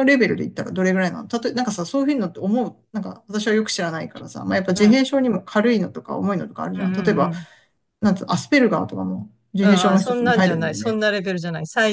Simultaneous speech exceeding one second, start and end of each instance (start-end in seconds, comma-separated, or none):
9.6-11.0